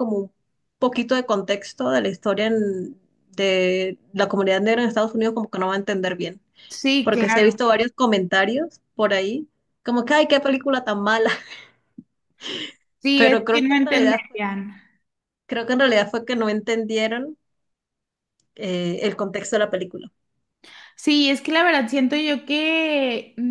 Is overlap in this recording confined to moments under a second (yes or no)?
no